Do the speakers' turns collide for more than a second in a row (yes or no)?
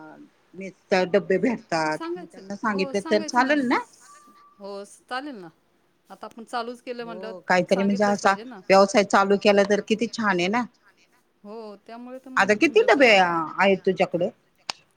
yes